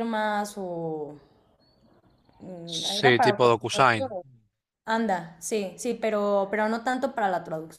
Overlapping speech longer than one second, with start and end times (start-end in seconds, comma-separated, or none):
2.6-4.1